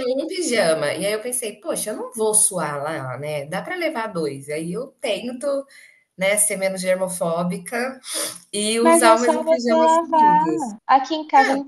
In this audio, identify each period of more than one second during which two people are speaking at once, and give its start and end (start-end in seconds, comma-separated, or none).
8.8-10.7